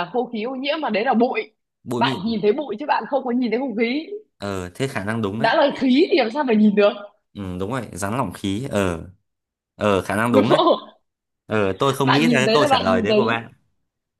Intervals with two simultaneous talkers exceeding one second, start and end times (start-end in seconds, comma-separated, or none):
12.0-13.4